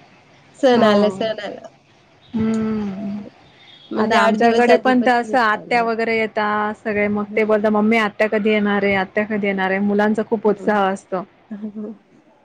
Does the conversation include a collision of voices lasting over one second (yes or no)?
yes